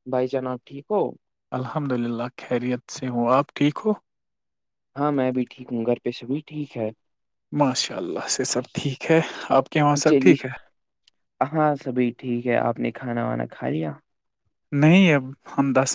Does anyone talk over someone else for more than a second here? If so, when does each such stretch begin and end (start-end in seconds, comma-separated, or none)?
none